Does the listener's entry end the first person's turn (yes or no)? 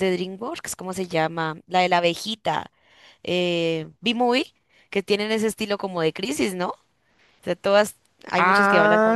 yes